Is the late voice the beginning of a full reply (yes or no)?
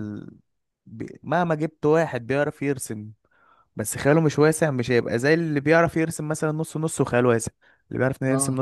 no